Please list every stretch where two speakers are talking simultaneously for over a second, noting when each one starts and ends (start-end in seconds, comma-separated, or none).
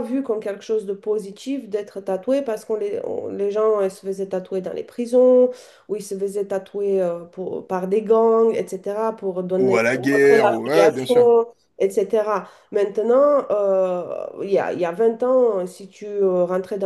9.6-11.2